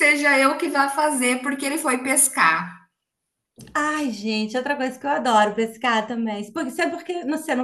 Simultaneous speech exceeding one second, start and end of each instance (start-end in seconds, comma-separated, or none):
none